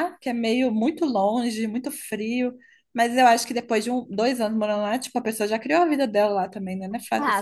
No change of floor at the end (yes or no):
no